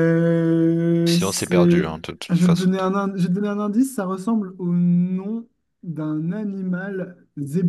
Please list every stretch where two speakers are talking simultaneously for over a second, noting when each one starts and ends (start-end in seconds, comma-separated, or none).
1.1-2.7